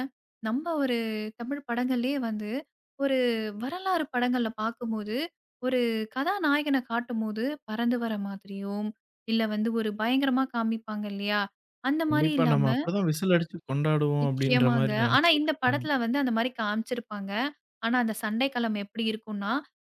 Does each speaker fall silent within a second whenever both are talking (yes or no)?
no